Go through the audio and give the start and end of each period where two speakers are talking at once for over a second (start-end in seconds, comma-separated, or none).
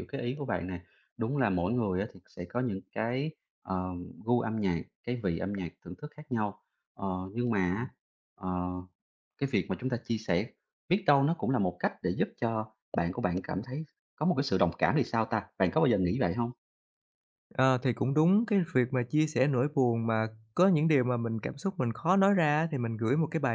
none